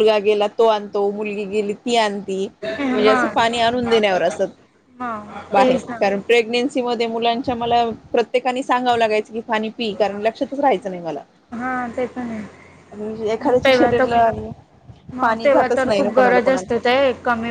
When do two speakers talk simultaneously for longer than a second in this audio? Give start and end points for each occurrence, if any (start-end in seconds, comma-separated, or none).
15.2-16.8